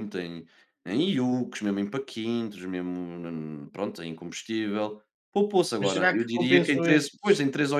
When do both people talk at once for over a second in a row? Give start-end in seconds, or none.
5.8-7.3